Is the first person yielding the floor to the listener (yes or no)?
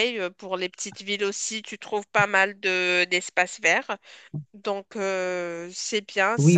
yes